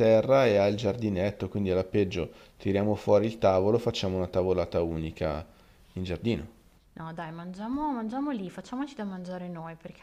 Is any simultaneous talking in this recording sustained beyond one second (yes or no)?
no